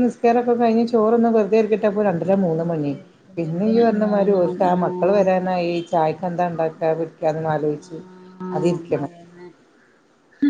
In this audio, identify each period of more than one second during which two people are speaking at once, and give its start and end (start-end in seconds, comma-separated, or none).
3.4-5.5